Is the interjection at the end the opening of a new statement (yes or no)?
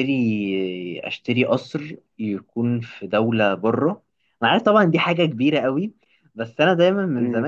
no